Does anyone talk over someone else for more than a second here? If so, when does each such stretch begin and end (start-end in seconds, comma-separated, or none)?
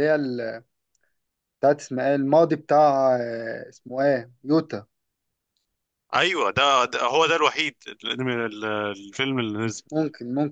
none